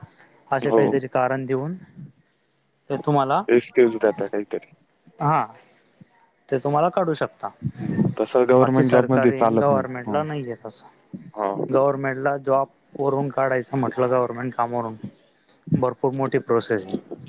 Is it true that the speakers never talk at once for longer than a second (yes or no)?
no